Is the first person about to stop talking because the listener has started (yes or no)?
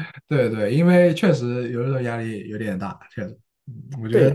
yes